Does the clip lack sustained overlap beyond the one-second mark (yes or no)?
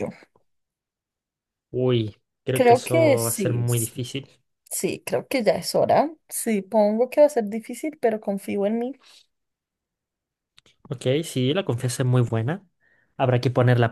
no